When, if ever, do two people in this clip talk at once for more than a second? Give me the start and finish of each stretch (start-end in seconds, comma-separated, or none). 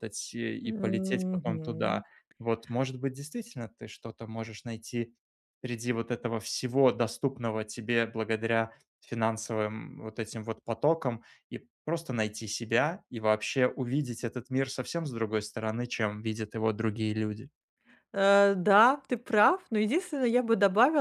0.6-2.0